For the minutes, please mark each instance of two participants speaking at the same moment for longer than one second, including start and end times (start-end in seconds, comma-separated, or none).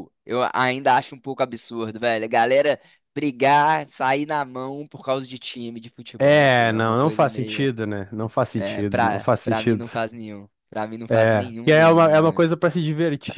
6.2-7.7, 8.5-9.9, 11.1-12.5